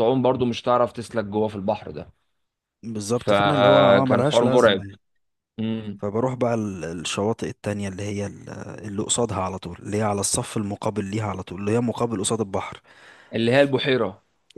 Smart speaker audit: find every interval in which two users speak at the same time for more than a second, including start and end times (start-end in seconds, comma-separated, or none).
3.1-4.8